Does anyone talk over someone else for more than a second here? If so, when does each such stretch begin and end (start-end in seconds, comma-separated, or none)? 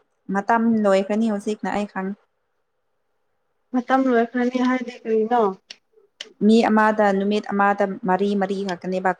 none